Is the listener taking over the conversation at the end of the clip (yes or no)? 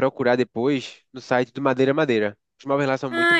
yes